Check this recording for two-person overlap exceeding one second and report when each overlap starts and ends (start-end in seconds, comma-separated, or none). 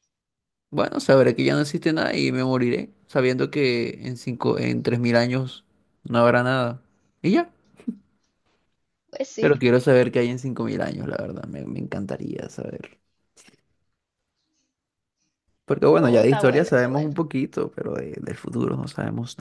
15.9-17.1